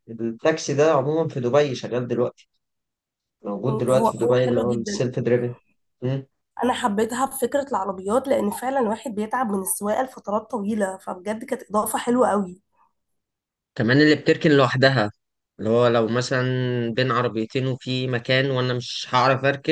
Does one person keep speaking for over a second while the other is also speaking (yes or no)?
yes